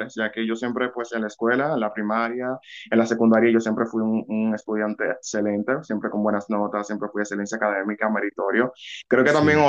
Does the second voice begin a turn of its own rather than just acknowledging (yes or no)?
no